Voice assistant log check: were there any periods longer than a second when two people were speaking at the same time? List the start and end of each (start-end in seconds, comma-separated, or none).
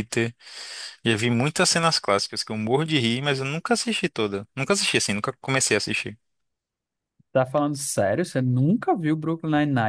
none